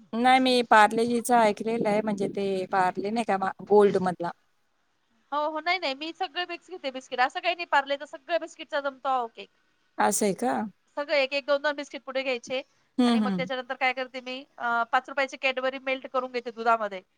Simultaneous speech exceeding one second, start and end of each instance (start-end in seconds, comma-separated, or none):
none